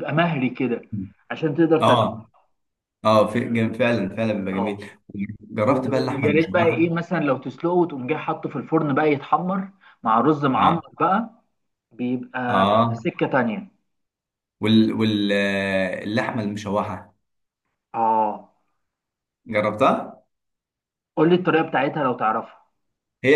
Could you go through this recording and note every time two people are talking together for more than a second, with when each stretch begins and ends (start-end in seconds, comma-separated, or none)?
5.7-6.9